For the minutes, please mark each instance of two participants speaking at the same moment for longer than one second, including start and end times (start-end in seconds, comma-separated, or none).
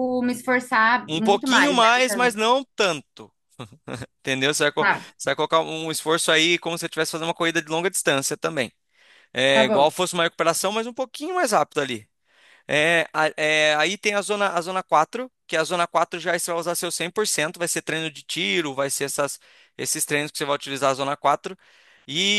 1.1-2.5